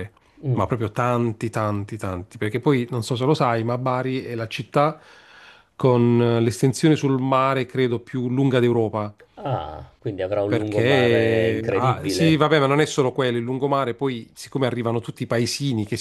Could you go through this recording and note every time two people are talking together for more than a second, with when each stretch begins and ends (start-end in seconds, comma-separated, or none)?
10.5-12.4